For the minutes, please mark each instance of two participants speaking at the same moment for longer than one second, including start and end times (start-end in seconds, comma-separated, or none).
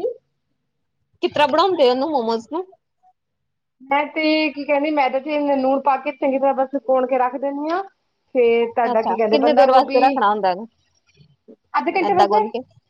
8.9-10.2